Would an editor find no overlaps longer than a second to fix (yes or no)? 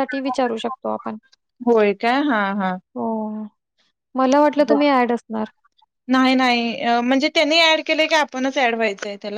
yes